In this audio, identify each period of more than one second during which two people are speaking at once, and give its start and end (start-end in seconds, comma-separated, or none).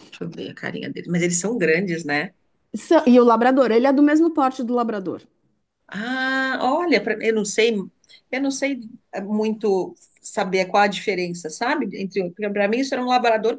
none